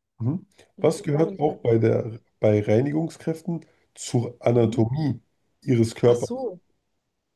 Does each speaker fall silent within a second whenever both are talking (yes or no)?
no